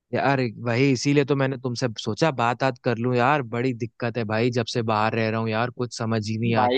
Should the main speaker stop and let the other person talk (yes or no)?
yes